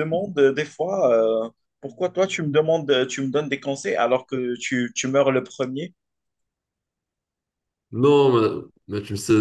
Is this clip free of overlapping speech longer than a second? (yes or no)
yes